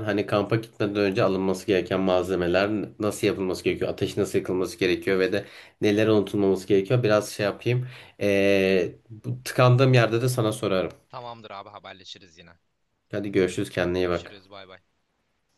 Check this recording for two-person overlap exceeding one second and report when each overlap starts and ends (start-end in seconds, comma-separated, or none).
none